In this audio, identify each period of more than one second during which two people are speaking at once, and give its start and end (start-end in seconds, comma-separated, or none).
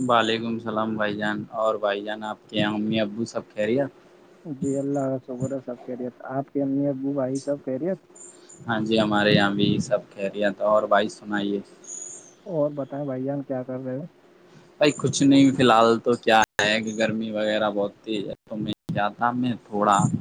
none